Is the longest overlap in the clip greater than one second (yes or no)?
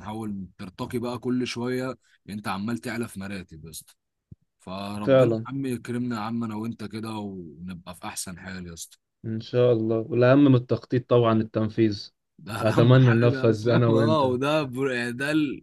yes